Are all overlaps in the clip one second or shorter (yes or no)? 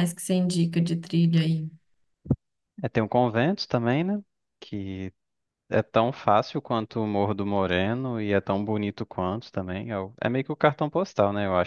yes